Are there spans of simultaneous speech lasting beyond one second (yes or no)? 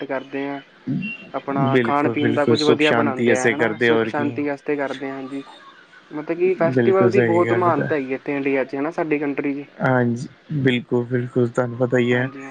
yes